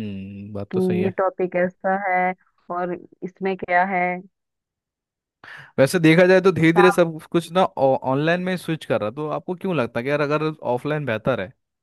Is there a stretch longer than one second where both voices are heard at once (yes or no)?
no